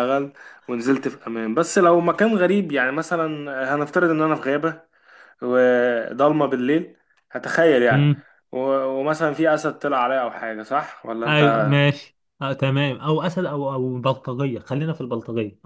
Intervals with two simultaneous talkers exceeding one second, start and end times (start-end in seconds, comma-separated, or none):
none